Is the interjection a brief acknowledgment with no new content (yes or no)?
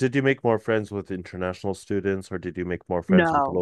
no